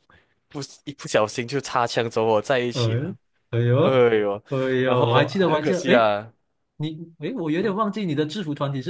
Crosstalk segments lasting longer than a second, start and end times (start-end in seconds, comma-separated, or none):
4.8-6.1